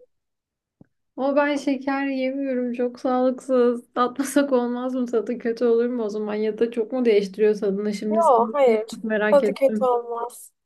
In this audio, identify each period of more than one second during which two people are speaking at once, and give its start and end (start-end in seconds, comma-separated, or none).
8.1-9.9